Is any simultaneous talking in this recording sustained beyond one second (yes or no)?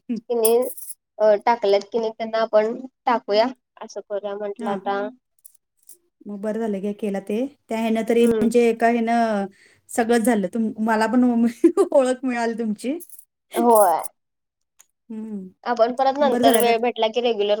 no